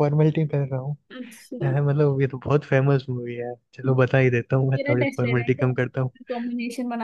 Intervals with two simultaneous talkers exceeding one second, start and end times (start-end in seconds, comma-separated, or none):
4.8-6.1